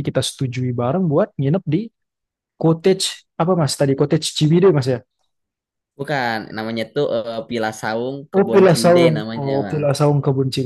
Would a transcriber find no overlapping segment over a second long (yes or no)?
no